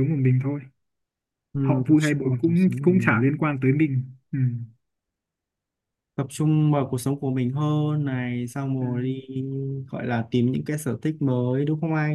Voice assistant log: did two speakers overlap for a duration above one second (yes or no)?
yes